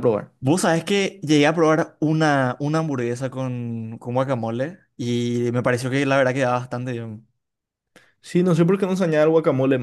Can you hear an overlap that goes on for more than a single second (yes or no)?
no